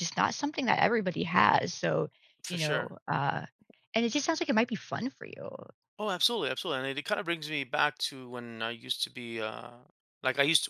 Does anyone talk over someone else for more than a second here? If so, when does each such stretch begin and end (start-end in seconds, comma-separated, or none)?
none